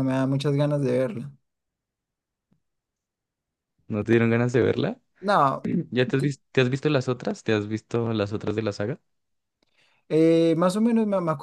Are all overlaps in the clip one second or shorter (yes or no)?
yes